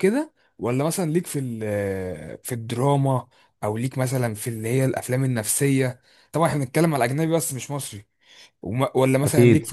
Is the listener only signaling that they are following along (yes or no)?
yes